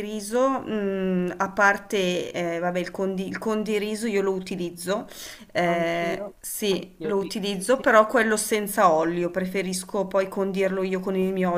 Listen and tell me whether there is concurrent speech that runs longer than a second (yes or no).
yes